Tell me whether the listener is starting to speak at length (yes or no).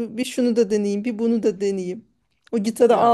no